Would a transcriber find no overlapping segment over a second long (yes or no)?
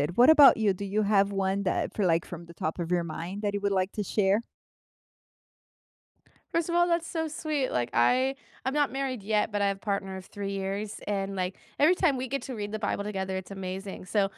yes